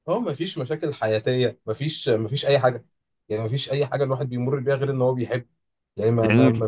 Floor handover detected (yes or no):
yes